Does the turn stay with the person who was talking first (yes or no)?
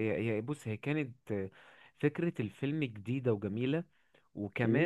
yes